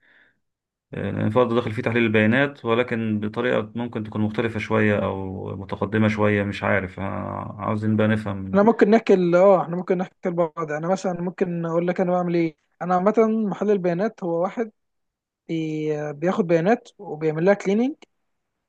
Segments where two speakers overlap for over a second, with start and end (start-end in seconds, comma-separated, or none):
none